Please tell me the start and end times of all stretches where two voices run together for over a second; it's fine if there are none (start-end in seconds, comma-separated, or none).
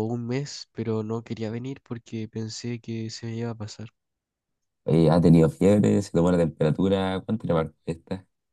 none